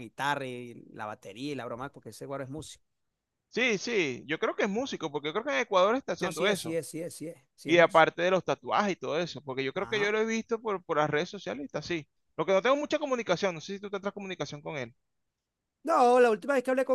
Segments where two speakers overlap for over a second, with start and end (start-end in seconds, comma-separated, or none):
none